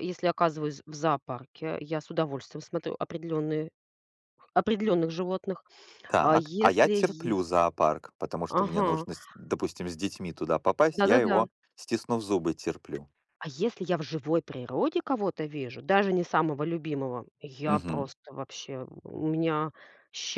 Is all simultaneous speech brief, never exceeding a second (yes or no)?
no